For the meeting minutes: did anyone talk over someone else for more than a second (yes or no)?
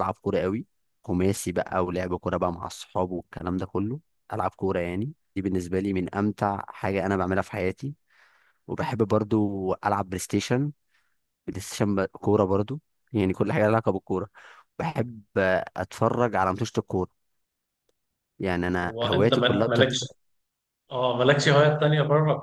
yes